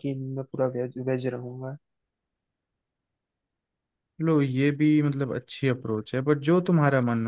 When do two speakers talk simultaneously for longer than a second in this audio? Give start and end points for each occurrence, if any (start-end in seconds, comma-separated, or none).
none